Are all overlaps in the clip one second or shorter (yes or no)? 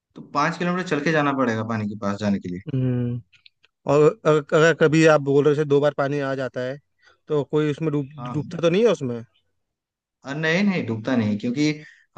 yes